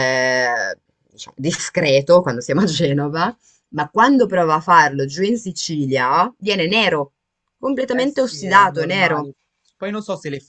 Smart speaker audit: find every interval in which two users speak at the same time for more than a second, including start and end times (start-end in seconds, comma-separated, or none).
7.9-9.3